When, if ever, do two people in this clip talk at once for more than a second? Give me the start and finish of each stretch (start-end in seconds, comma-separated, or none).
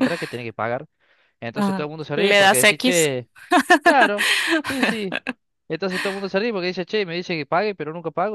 1.6-3.1